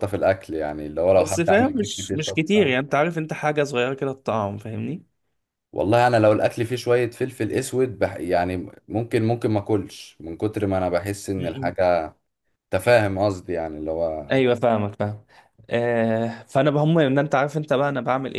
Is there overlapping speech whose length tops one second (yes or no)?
yes